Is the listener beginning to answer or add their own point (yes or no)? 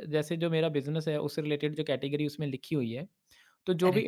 no